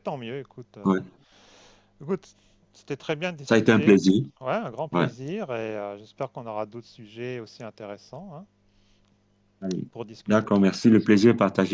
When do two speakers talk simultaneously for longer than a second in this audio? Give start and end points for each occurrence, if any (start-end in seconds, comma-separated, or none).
none